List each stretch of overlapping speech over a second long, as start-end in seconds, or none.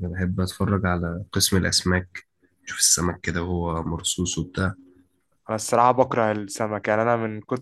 none